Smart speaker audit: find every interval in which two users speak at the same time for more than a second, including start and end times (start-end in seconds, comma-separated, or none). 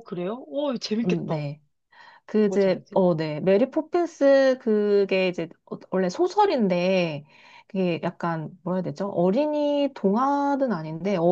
none